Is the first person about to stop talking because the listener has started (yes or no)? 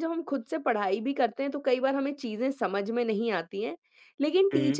no